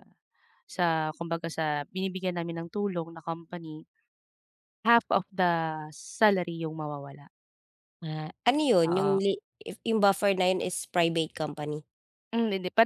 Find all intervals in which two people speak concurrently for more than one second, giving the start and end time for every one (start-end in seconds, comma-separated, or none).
none